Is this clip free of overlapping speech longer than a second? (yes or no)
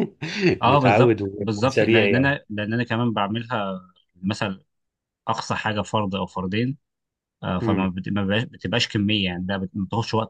no